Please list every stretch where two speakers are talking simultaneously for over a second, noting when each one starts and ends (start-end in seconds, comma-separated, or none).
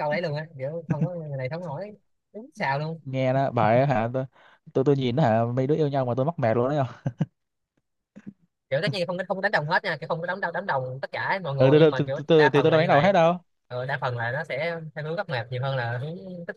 11.6-13.1